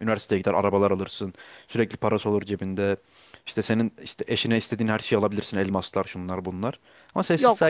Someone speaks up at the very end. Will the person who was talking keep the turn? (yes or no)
no